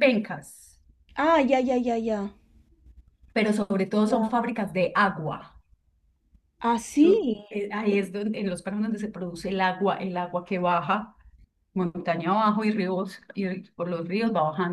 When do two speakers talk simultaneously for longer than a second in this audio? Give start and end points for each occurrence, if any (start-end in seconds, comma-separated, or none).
none